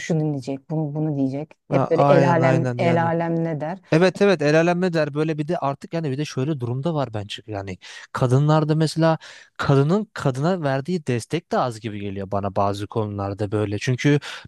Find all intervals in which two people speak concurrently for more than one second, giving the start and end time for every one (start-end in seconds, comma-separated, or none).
1.7-3.1